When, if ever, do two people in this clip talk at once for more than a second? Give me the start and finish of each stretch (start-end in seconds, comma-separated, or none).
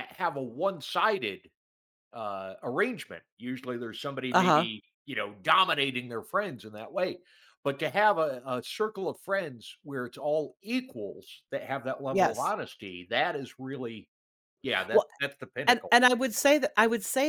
none